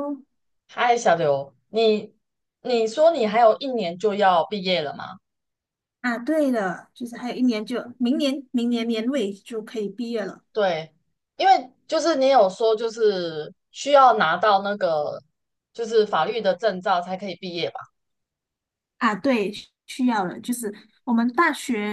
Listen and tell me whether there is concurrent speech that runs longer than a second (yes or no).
no